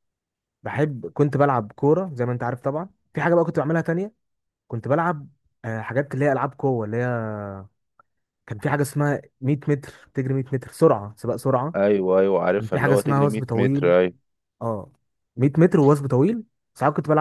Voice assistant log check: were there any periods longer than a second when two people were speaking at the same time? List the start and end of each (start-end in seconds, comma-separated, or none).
12.6-13.9